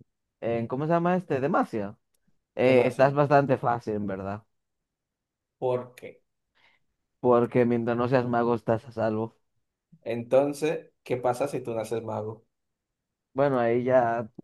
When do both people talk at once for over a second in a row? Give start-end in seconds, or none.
none